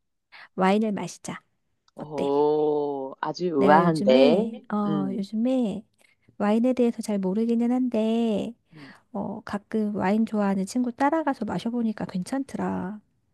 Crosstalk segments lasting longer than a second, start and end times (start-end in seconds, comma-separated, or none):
3.6-5.3